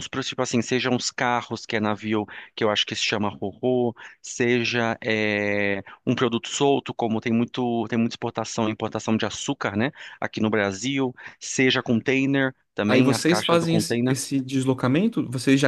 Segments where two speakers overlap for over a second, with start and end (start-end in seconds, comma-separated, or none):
12.8-14.2